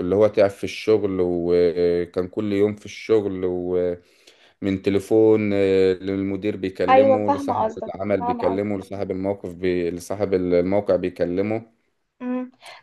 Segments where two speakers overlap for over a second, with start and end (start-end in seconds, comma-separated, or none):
6.9-8.7